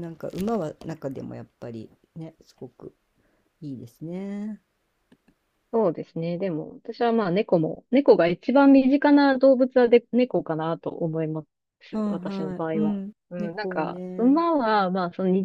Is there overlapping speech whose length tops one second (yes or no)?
yes